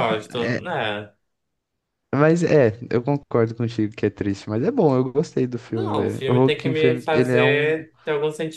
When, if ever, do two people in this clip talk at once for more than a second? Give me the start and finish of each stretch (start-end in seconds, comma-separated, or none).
5.7-7.8